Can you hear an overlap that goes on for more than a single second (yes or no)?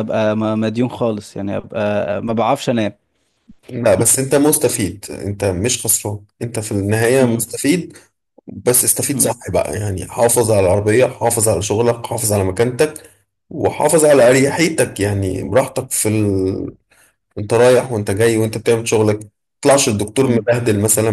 no